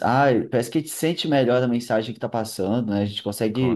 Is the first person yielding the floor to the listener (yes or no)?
no